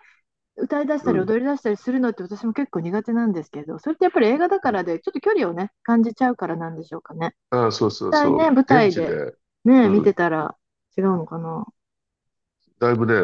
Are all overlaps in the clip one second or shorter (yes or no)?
no